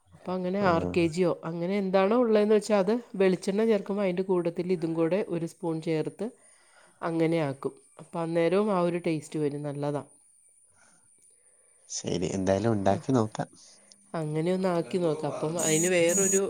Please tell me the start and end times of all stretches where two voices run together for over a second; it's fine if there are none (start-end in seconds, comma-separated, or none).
none